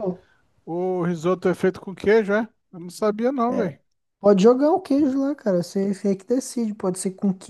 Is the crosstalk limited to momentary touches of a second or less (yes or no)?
yes